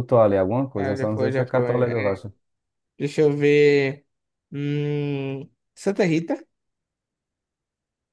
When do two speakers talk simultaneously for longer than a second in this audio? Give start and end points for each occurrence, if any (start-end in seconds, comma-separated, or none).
0.7-2.2